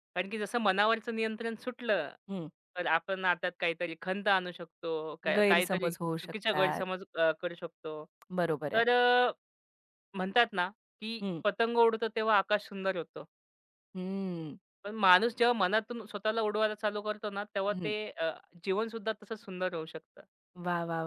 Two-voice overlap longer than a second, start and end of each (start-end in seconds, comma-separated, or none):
5.4-6.8